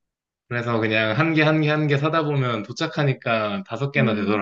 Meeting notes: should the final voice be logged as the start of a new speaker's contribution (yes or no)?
yes